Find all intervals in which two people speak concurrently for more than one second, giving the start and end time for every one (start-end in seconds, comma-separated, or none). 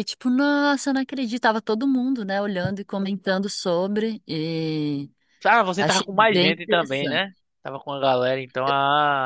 5.8-7.2